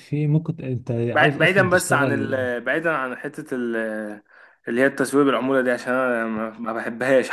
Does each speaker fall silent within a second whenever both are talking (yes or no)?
no